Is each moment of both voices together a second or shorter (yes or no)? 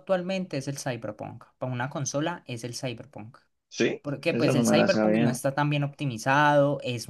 no